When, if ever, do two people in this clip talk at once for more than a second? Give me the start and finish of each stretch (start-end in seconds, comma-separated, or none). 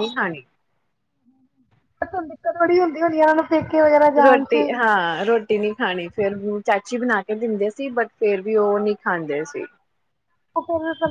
none